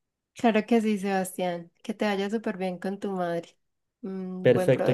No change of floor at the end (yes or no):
no